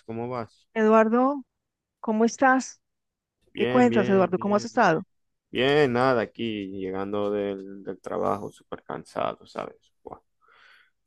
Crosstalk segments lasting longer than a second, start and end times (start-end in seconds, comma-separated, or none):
3.6-4.9